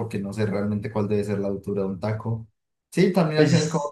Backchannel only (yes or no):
yes